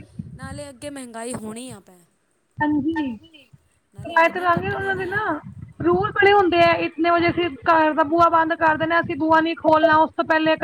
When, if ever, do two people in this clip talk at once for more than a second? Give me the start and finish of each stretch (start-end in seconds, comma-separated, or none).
4.0-5.3